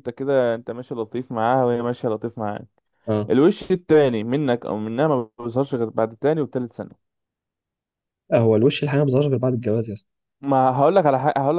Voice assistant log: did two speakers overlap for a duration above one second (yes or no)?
no